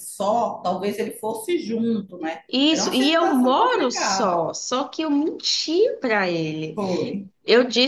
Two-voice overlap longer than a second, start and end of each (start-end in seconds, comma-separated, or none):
2.5-4.4